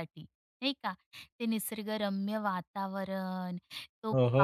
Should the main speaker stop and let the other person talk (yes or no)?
no